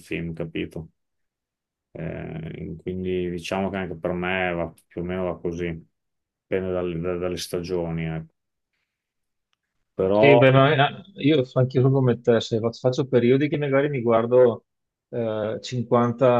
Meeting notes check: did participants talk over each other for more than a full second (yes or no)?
no